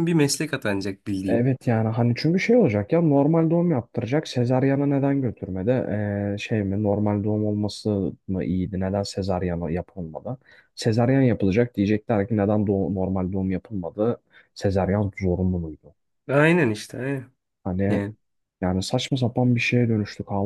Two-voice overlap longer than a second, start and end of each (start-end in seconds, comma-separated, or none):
none